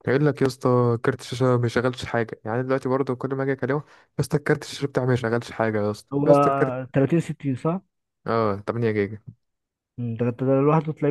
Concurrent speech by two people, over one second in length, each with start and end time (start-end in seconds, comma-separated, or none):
none